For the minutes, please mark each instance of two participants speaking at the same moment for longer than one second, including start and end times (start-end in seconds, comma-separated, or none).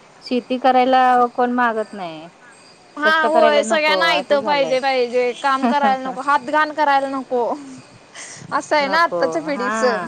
3.0-4.8